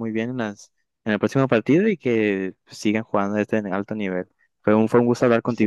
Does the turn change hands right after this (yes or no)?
yes